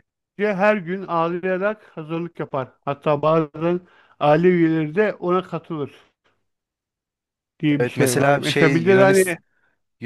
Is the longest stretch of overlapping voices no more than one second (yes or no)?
no